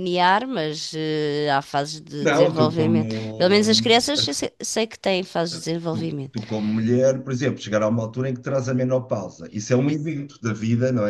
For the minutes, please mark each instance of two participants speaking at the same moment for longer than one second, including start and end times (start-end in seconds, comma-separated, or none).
2.2-4.1